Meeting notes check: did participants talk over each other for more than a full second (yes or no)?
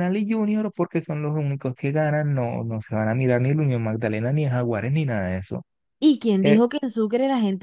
no